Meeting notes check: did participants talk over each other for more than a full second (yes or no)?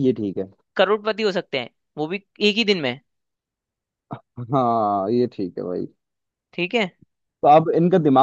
no